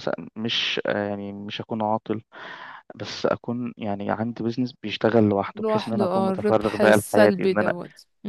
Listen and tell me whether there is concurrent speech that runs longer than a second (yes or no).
yes